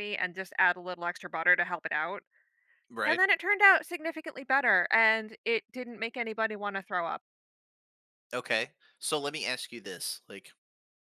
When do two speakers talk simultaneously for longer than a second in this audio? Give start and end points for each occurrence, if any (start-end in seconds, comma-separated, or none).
none